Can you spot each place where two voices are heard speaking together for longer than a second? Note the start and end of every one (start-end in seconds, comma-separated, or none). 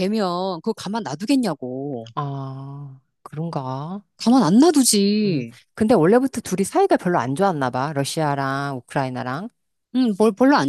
none